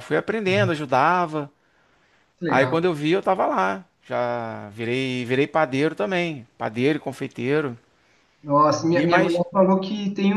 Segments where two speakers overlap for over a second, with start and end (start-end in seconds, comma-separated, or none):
none